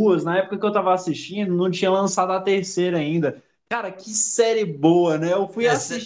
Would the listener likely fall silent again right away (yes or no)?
yes